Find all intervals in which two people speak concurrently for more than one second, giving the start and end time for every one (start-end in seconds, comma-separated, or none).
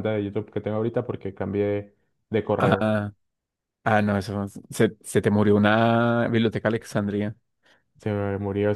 none